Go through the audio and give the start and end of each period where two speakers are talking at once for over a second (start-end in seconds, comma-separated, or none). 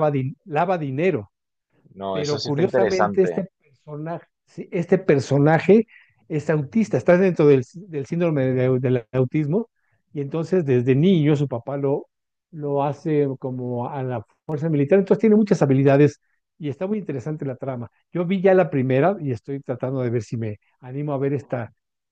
2.1-3.4